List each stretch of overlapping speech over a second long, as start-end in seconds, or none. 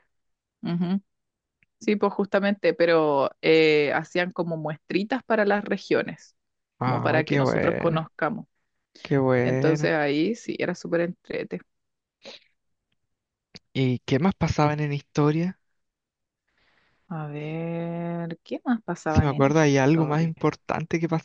6.8-8.1, 19.1-20.3